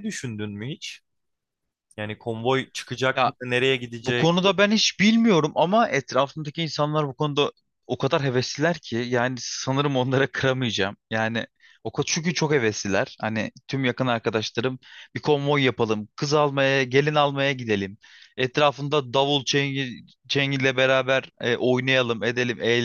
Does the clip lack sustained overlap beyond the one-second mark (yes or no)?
yes